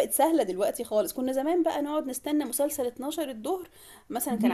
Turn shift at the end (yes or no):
yes